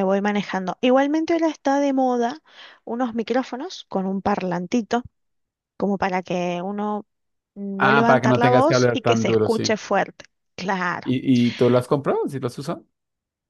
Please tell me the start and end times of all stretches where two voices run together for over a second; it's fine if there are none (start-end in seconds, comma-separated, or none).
7.8-9.8